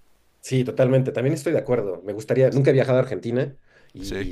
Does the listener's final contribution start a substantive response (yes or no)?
no